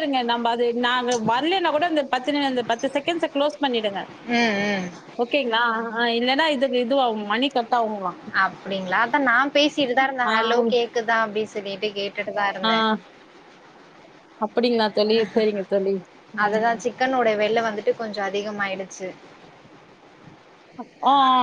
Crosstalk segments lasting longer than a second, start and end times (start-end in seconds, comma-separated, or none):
none